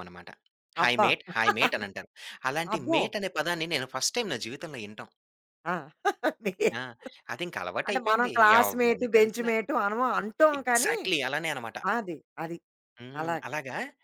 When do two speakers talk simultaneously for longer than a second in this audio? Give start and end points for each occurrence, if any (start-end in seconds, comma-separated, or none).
7.9-9.5